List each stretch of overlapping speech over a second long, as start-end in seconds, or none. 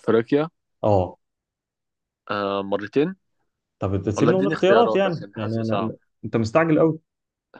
4.2-5.9